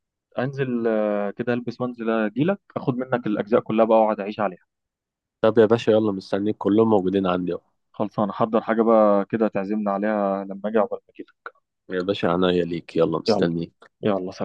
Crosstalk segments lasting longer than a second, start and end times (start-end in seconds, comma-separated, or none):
none